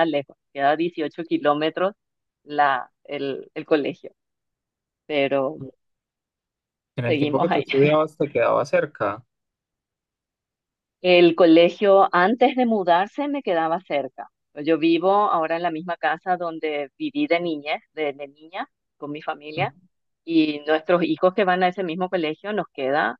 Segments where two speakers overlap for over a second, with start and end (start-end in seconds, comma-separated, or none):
none